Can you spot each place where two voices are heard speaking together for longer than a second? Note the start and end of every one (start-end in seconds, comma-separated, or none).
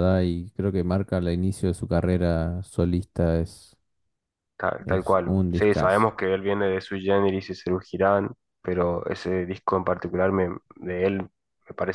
4.8-6.1